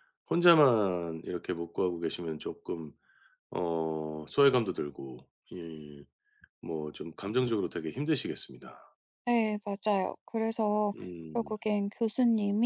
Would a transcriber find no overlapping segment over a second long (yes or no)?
yes